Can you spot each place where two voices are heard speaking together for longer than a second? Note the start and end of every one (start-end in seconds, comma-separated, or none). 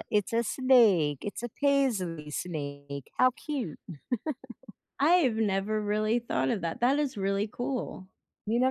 none